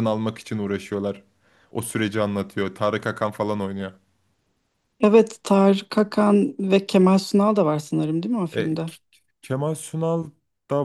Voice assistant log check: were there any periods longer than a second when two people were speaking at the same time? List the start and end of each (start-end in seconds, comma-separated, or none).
none